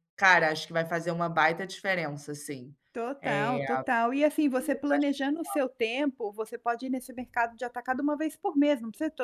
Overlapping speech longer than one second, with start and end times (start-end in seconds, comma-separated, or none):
none